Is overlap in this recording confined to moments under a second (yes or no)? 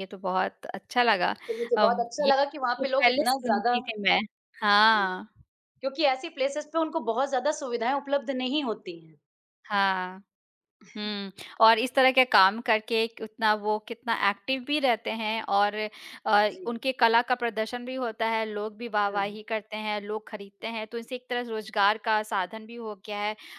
no